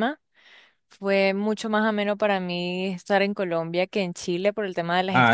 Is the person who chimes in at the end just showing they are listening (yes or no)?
no